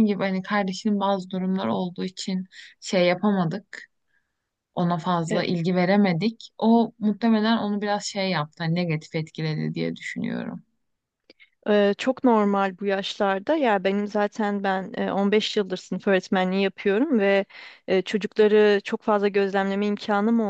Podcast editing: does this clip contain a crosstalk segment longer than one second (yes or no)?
no